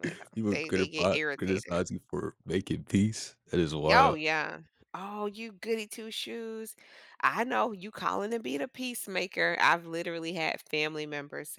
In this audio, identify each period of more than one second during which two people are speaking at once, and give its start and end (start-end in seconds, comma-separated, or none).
0.5-1.8